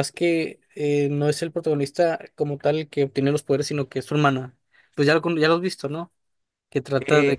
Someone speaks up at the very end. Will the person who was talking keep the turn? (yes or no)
no